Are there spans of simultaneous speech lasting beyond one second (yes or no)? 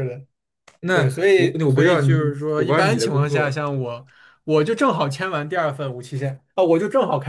yes